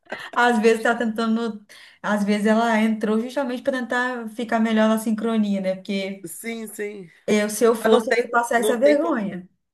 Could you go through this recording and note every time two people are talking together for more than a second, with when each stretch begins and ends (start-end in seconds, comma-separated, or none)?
7.8-9.2